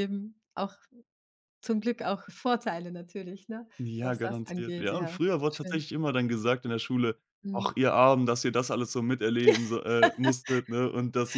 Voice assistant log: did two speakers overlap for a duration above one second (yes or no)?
yes